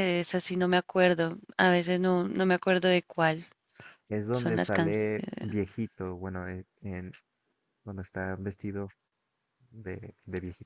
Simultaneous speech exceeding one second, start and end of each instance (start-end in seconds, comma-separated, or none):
4.3-5.6